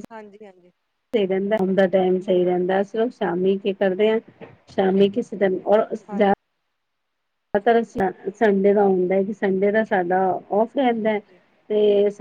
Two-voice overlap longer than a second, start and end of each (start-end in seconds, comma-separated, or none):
none